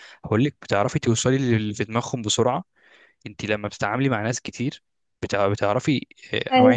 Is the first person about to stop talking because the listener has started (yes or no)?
no